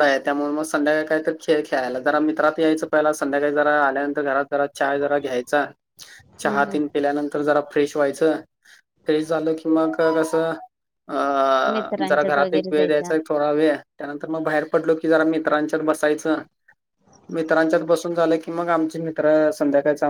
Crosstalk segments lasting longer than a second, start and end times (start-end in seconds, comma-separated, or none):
11.7-13.1